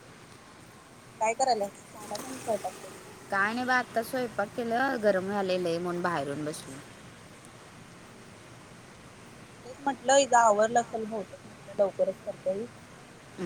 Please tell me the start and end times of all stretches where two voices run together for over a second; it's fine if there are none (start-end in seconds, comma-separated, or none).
none